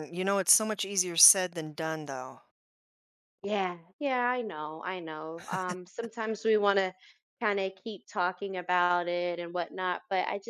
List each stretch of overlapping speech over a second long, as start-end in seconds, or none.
none